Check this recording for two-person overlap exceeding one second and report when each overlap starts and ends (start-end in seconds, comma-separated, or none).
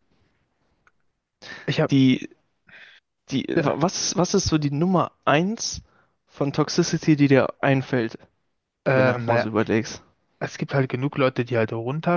none